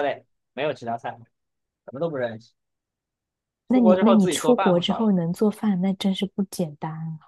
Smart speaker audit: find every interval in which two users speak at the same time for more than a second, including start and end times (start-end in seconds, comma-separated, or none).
3.7-5.1